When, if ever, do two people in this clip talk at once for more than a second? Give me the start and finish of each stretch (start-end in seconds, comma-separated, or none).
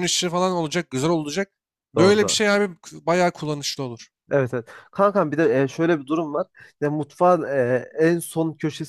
none